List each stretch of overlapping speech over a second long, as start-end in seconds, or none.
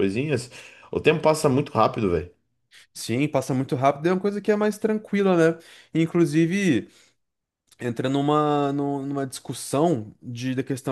none